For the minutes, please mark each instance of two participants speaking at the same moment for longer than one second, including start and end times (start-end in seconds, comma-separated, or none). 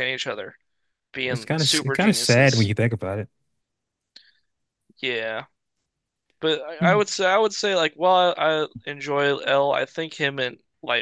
1.3-2.7